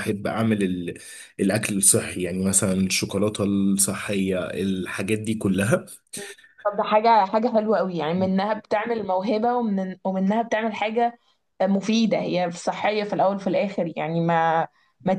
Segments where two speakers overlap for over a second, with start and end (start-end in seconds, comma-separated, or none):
none